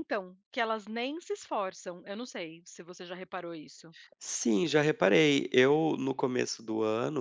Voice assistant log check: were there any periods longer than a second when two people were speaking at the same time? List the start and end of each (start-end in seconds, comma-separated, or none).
none